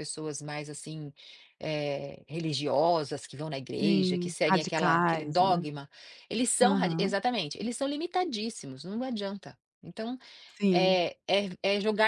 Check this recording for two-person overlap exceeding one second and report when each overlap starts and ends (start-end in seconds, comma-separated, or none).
3.8-5.7